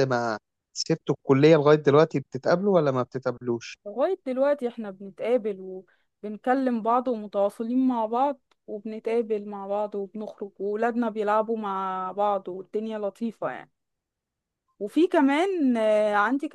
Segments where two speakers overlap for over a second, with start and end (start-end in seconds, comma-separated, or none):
none